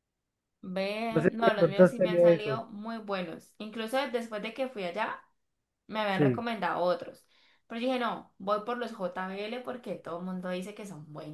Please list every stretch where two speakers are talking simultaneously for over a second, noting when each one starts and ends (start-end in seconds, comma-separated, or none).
1.1-2.6